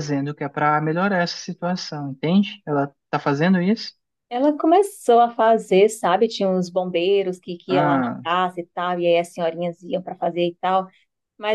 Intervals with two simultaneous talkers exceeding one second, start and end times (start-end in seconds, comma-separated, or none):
none